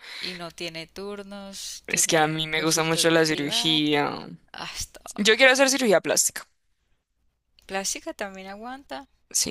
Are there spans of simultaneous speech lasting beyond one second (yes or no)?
yes